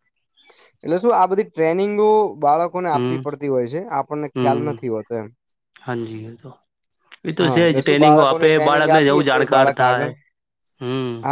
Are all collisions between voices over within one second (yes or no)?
no